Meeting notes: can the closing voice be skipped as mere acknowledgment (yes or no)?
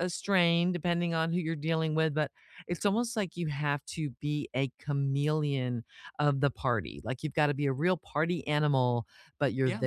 yes